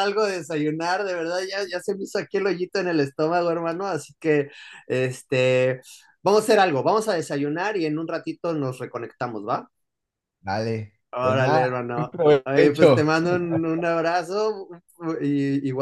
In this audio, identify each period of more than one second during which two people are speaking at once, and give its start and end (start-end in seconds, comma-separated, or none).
11.1-13.1